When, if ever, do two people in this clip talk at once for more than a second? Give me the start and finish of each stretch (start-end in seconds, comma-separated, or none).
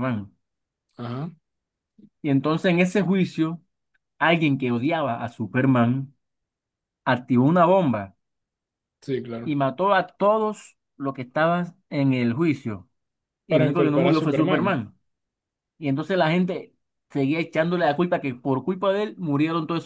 13.5-14.8